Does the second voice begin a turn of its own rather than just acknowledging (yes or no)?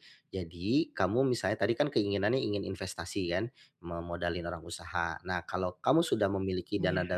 no